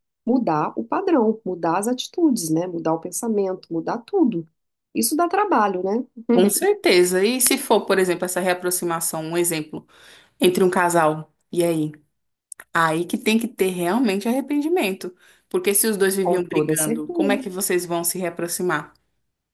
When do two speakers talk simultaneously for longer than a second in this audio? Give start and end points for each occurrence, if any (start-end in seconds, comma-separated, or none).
16.2-17.4